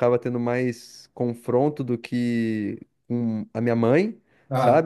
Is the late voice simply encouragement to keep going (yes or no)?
yes